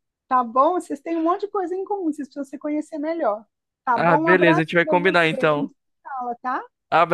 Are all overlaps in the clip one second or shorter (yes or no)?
no